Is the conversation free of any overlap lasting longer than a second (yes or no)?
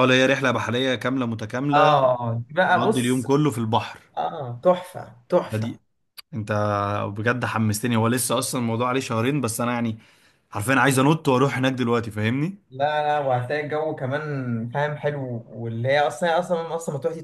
yes